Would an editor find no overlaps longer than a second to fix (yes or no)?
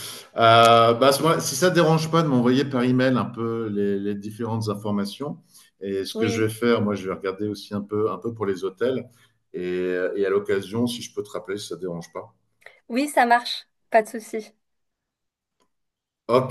yes